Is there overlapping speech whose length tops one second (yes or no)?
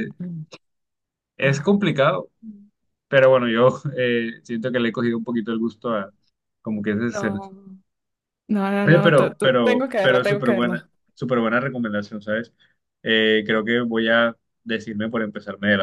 yes